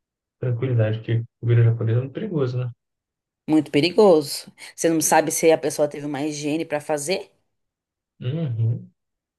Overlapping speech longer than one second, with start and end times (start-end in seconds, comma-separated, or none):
none